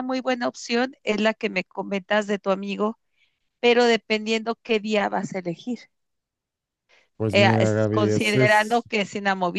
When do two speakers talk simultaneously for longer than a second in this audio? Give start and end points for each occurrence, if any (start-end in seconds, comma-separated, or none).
7.3-8.8